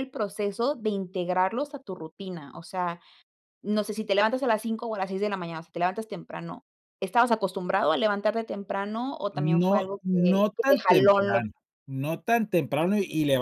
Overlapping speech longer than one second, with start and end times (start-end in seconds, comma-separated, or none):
9.3-11.4